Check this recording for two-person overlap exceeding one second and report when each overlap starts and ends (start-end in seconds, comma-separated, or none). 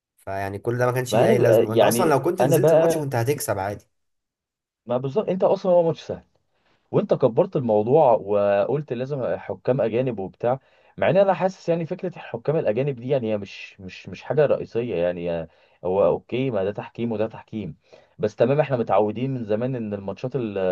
1.1-3.1